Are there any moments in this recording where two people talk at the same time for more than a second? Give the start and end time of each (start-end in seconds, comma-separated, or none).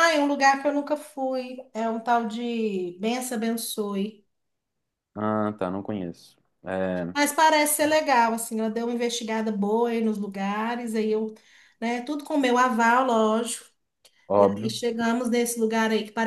none